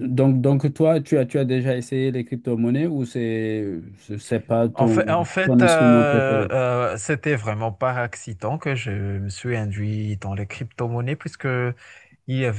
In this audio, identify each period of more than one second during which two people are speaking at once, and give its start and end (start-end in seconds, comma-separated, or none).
4.7-6.5